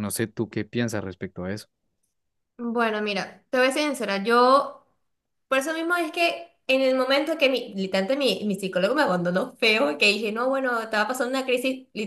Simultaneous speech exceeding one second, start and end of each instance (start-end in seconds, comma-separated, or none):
none